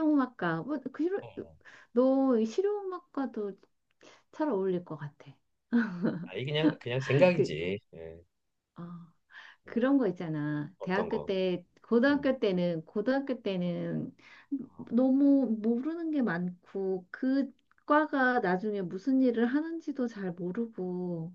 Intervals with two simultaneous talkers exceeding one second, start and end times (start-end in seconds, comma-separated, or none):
none